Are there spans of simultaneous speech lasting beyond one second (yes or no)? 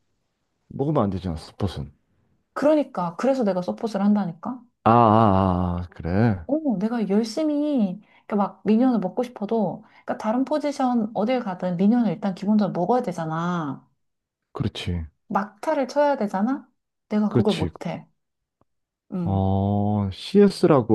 no